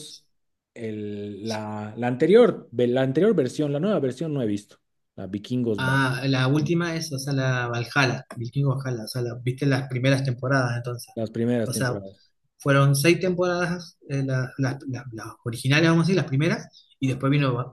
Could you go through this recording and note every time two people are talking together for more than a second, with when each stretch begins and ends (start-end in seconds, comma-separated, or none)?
none